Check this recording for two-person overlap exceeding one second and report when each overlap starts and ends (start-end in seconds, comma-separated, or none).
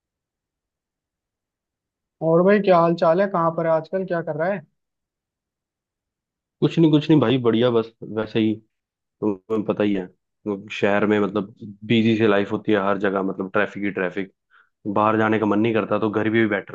none